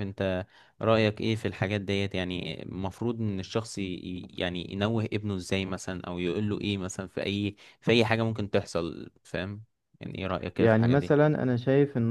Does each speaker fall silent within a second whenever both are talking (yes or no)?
yes